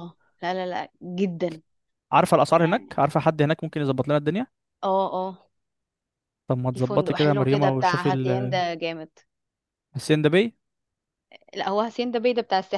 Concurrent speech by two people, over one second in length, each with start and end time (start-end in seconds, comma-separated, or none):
6.7-8.6